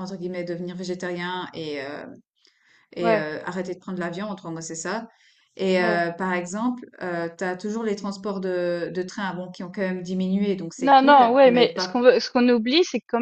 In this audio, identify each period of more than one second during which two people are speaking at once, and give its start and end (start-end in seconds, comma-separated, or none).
10.8-12.1